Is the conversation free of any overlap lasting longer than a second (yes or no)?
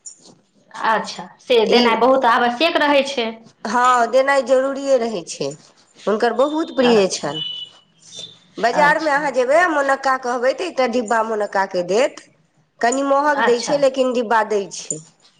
yes